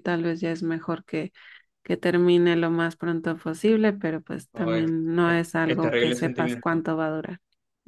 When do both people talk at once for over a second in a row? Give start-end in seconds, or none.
4.5-6.8